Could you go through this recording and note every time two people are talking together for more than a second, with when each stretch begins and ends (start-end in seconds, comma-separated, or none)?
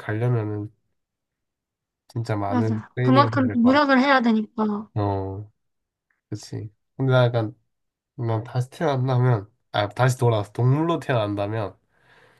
2.5-3.8